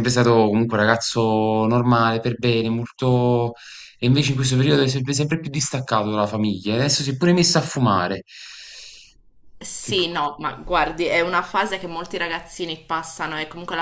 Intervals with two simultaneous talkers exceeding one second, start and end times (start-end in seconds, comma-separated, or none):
none